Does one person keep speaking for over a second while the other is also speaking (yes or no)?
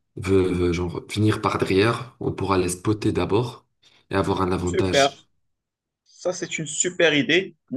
no